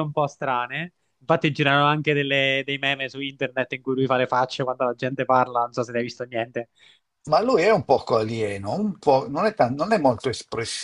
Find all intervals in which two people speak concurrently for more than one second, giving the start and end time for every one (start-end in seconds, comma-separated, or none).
none